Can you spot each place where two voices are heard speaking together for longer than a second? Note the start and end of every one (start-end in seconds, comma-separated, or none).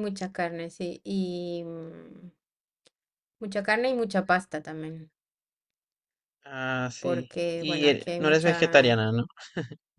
7.0-9.0